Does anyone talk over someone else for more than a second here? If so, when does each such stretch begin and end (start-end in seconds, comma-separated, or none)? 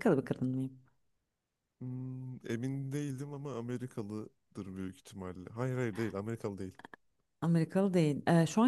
none